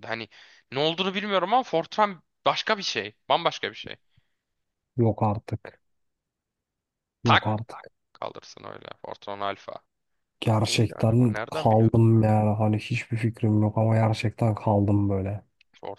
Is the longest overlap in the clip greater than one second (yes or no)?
yes